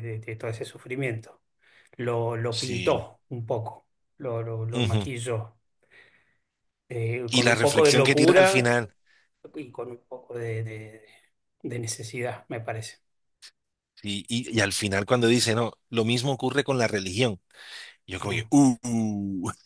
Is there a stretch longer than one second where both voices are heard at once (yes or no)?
yes